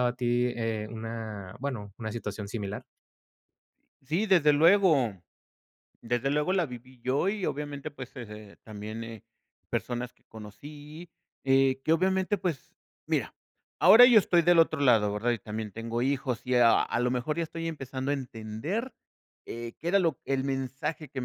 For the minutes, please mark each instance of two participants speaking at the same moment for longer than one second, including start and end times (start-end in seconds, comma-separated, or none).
none